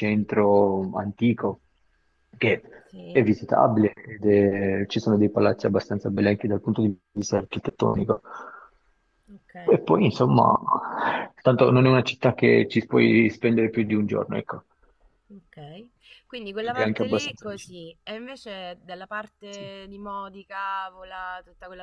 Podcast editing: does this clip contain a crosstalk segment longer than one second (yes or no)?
yes